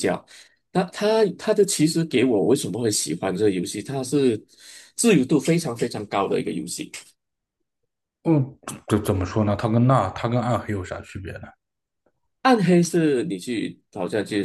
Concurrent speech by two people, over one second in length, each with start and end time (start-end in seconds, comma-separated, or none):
none